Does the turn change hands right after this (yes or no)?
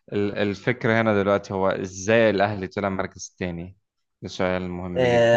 yes